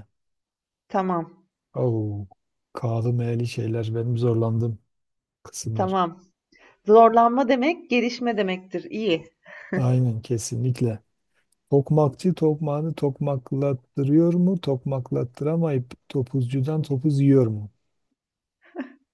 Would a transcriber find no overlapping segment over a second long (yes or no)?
yes